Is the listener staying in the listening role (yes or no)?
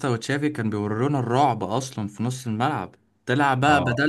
yes